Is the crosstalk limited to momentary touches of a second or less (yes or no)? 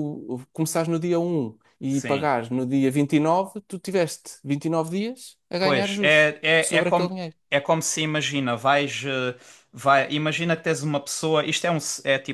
no